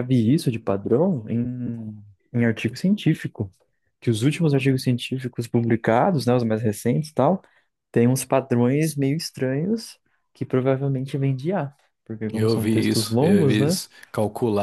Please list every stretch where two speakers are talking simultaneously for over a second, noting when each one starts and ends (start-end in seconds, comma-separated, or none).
12.3-13.8